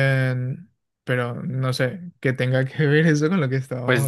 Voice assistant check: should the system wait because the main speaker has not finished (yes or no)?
no